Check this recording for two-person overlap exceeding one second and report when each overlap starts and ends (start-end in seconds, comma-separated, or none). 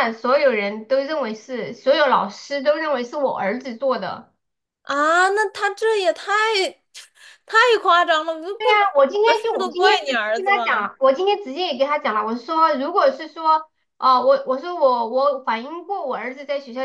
8.6-10.6